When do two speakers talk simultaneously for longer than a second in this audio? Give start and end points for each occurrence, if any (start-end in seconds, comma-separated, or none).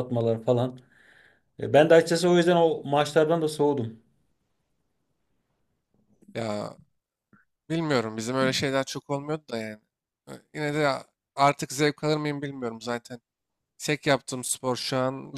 none